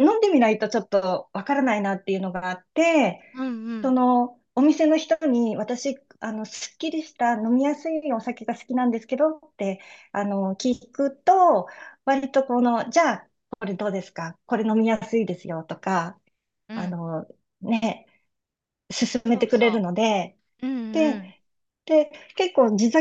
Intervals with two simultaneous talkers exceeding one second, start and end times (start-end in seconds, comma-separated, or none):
none